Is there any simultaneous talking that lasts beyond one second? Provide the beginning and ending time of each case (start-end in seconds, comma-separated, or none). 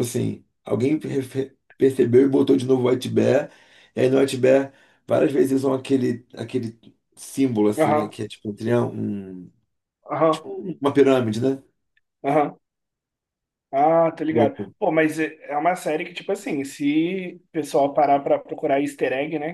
none